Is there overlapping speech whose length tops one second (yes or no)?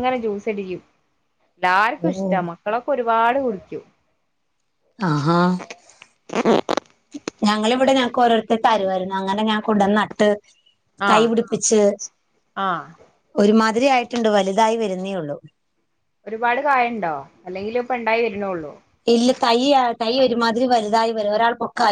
no